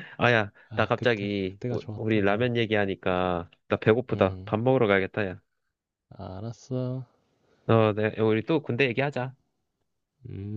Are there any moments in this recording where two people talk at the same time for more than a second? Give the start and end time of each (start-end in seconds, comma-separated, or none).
0.7-2.5